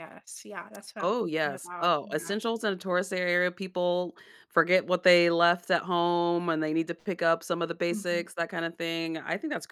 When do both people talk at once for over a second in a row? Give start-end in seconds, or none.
1.0-2.4